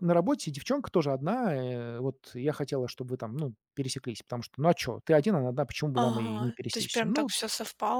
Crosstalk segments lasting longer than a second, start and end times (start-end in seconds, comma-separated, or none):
5.9-7.3